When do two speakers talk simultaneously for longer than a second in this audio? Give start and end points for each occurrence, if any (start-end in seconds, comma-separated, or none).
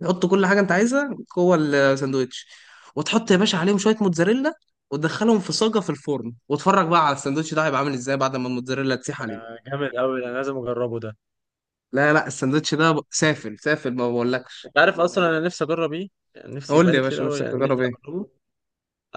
16.7-18.0